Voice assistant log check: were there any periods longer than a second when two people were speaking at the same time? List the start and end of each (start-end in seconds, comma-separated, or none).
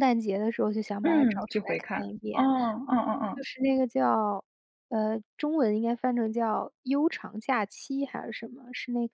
1.0-2.5